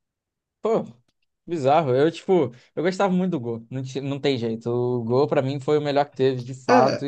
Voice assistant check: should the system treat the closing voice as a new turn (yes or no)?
yes